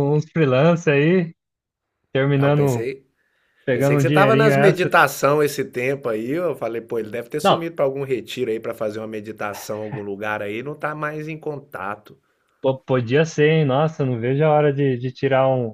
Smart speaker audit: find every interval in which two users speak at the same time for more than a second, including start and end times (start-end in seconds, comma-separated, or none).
3.7-5.0